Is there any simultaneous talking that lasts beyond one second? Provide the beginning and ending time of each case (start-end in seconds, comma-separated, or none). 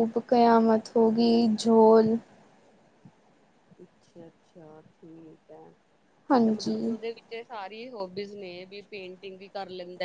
none